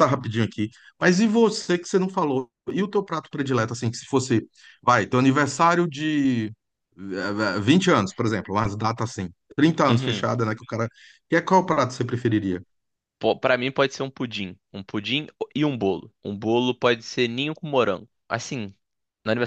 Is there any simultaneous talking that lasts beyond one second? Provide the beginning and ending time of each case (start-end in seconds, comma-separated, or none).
none